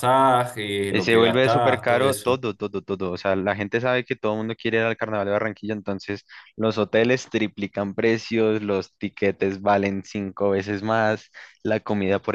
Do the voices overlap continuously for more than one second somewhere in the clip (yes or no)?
yes